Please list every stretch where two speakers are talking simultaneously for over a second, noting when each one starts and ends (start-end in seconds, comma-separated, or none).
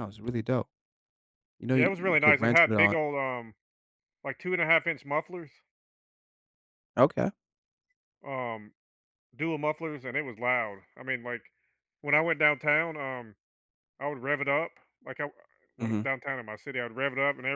1.7-3.0